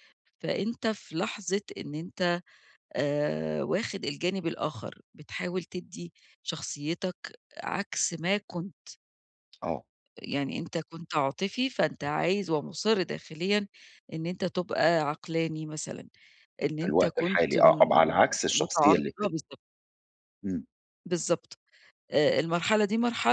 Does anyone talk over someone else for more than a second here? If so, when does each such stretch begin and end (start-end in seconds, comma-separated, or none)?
16.8-19.4